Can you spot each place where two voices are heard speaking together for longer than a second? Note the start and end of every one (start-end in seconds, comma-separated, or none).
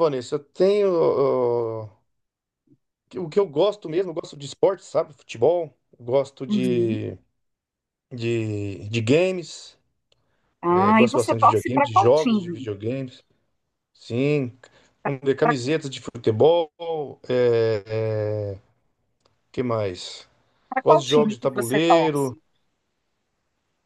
10.7-12.7, 20.8-22.4